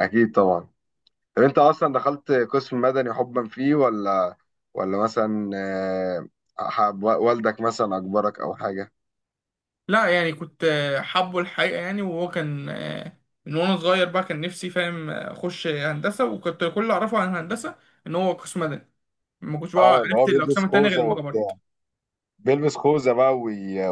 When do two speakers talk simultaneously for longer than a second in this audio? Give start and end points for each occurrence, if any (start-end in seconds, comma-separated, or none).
19.8-21.5